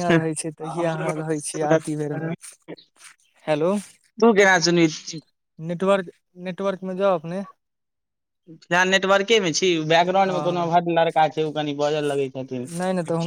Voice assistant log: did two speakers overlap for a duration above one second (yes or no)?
no